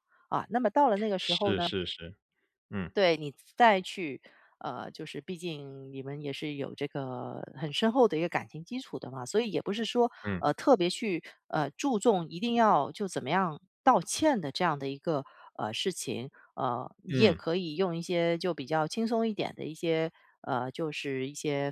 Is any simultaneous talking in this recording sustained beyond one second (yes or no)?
no